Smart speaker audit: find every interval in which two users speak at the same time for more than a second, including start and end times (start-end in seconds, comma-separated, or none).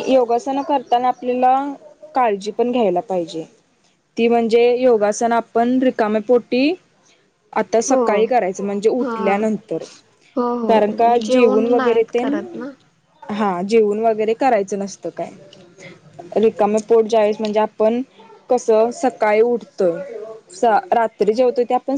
10.7-12.2